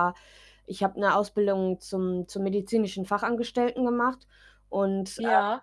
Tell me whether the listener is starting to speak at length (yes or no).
no